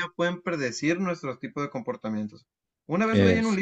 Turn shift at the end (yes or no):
no